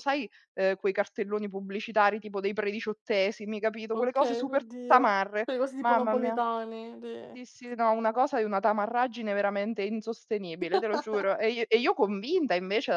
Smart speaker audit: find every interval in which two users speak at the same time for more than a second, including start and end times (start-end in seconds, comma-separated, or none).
3.9-6.4